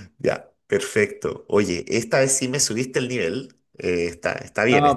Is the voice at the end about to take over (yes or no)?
yes